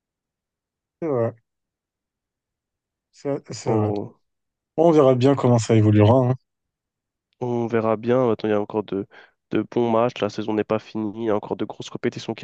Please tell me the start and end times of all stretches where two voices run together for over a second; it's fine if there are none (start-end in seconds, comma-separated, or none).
none